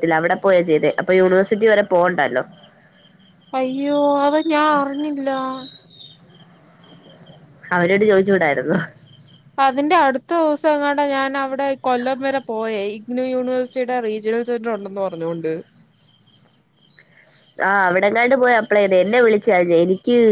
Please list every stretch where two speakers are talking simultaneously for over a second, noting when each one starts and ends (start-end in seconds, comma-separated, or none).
none